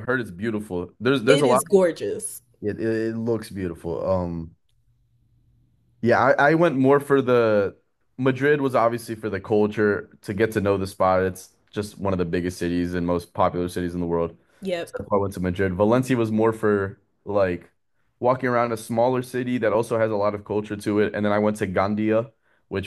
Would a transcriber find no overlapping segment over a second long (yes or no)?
yes